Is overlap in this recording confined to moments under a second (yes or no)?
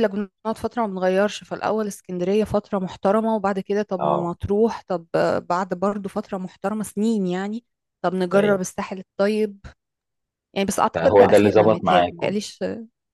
no